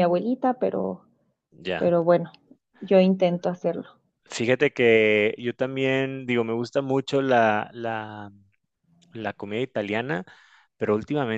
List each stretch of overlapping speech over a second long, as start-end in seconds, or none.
none